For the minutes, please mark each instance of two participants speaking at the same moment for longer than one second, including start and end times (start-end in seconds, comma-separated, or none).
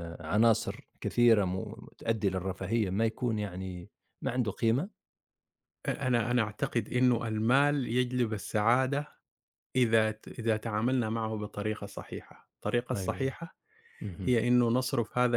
none